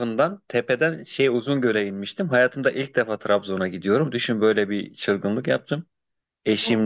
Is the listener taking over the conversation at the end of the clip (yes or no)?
no